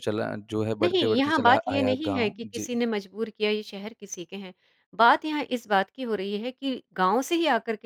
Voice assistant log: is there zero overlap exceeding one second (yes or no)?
no